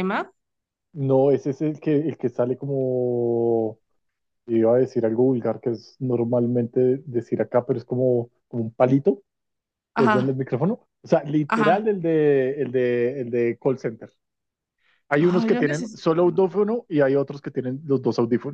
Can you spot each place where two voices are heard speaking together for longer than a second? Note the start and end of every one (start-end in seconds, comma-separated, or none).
15.2-16.5